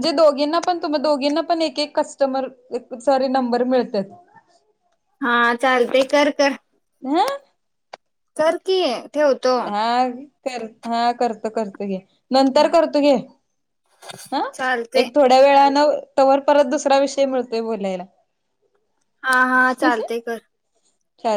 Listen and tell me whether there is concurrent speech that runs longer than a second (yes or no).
no